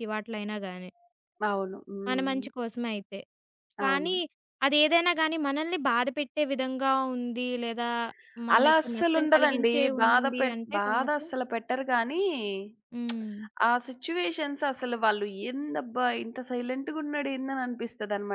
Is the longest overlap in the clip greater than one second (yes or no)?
yes